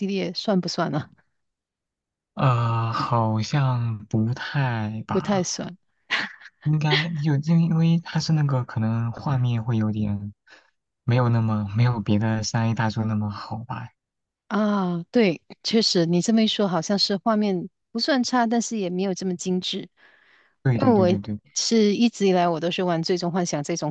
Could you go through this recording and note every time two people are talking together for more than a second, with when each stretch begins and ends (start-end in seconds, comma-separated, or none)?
none